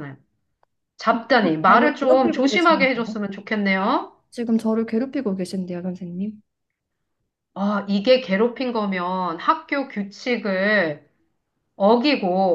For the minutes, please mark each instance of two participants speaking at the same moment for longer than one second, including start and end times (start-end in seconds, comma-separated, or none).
1.1-3.2